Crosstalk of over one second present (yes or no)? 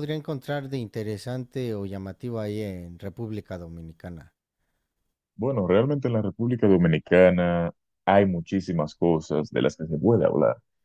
no